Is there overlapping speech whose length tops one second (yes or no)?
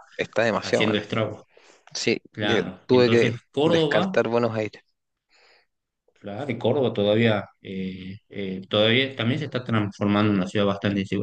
yes